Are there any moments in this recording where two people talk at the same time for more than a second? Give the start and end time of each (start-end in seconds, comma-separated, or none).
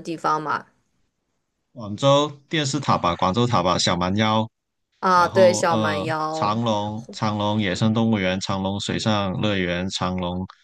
5.1-6.6